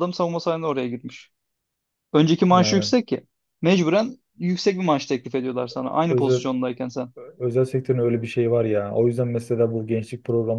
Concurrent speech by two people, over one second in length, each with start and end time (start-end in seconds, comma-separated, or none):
none